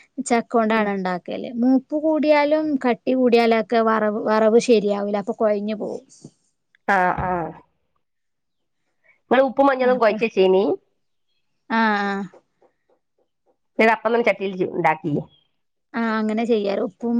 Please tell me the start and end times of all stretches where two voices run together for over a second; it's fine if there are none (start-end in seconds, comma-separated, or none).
none